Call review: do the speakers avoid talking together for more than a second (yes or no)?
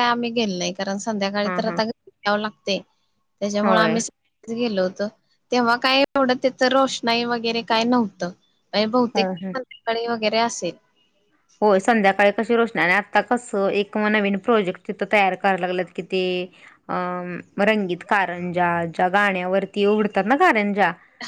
yes